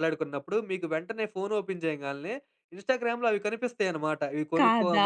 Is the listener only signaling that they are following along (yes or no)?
yes